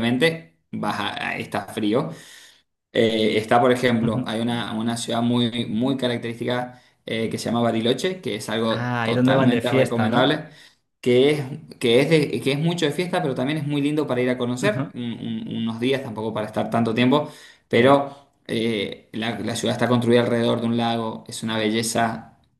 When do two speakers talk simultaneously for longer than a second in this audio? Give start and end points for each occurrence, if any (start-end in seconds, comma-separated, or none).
8.7-10.4